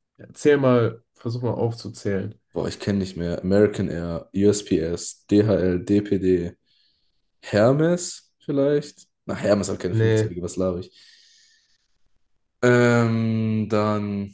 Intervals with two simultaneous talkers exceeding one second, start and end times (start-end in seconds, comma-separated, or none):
none